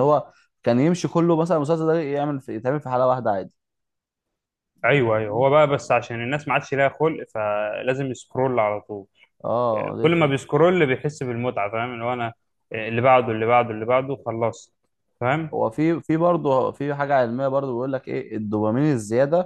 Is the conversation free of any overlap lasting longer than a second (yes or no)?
yes